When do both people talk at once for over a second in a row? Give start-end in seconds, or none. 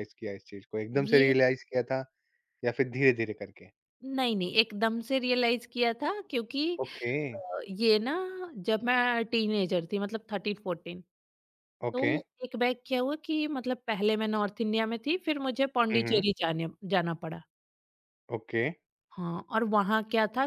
none